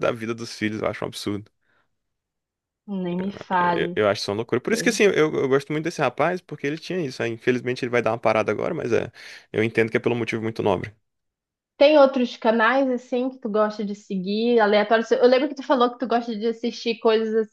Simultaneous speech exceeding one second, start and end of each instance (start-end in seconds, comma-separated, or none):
none